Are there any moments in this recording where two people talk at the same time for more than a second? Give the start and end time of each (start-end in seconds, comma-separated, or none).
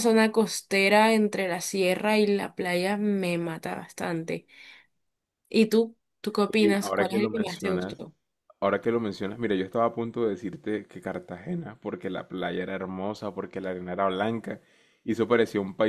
6.5-8.0